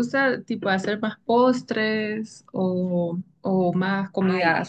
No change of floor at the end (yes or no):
no